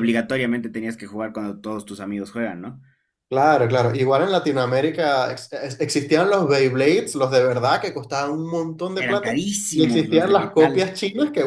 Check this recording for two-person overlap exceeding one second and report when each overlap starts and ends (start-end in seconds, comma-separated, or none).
8.9-11.0